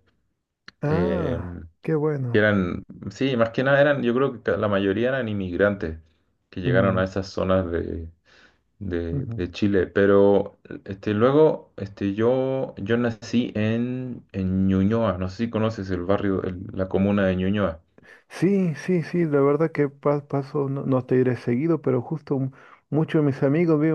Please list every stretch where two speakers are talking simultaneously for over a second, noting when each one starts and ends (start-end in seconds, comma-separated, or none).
none